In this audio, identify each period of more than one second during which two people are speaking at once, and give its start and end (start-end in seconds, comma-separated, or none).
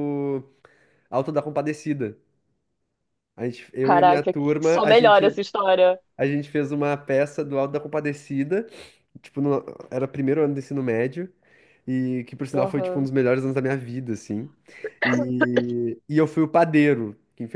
3.8-5.3